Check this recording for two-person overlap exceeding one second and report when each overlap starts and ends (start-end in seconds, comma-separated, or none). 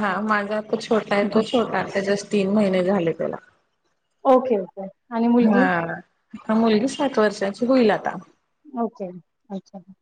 none